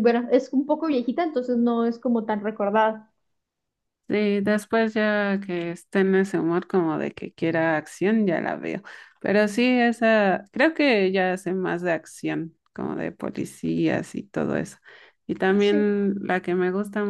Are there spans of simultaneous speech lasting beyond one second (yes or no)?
no